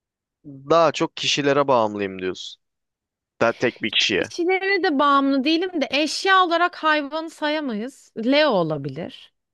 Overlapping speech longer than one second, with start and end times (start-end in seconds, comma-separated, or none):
none